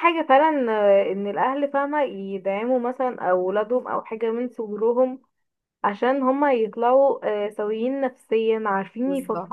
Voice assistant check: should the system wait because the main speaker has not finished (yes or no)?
yes